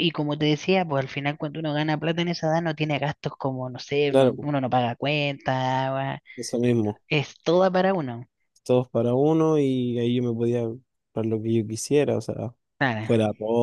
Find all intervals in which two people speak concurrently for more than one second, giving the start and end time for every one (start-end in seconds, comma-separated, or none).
none